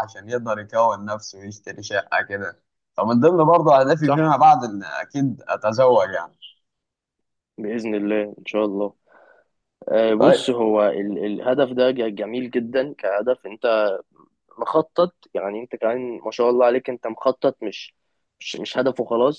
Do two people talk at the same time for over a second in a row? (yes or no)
no